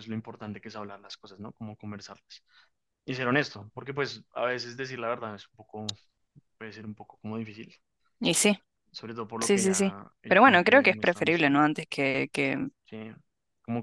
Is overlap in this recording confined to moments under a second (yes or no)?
no